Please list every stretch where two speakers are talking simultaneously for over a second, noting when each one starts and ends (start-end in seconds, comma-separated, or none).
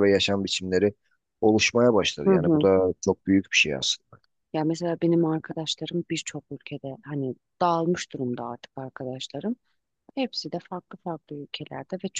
none